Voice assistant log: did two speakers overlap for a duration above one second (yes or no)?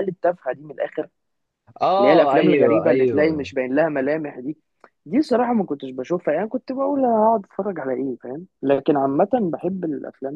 yes